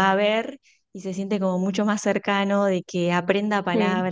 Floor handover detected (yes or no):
no